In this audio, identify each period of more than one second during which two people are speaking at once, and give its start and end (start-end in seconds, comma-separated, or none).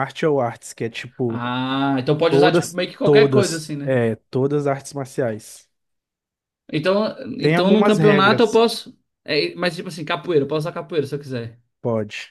2.3-3.9, 7.4-8.6